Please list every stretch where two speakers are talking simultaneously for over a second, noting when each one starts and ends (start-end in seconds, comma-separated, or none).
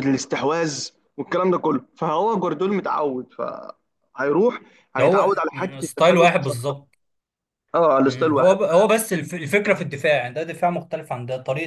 5.0-6.7